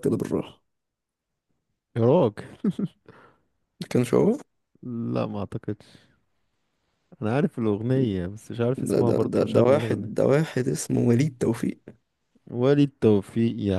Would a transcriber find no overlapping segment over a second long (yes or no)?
no